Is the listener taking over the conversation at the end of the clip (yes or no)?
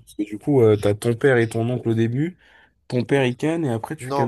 yes